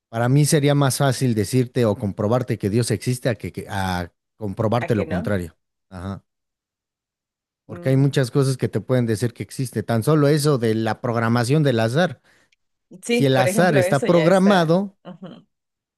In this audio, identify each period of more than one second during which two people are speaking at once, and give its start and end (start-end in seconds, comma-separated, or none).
13.1-15.0